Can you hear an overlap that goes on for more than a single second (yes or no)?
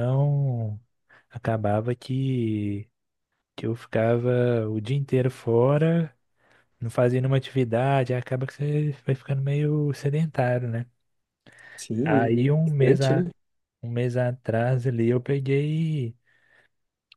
yes